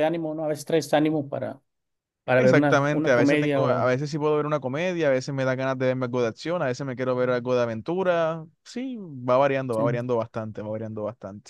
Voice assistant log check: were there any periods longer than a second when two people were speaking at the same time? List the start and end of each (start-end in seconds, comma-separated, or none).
2.3-3.9